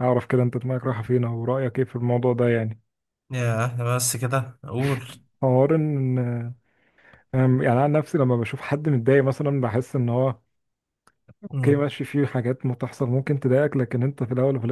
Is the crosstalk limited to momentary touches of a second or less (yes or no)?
yes